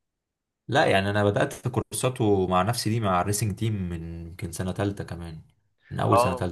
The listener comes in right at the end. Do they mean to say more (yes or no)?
yes